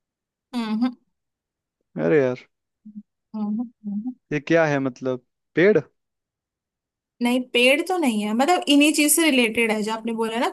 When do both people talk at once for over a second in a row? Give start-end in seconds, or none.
none